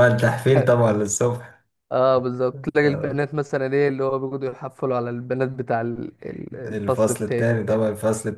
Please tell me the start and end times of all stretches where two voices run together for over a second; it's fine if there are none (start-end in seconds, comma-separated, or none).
6.7-7.9